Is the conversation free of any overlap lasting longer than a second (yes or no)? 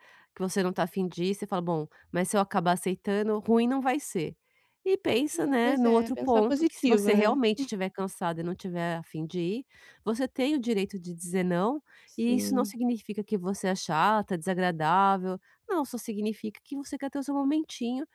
no